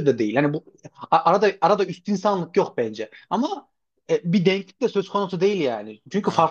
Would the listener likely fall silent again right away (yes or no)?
yes